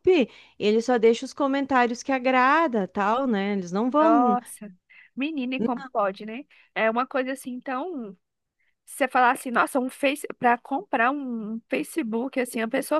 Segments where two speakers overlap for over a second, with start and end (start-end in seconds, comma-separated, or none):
none